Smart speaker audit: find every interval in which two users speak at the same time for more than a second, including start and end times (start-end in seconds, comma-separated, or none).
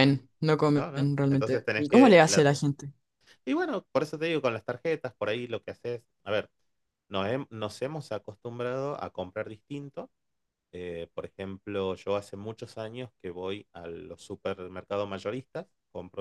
0.7-2.5